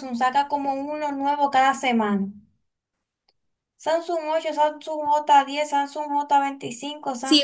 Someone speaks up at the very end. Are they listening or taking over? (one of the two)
taking over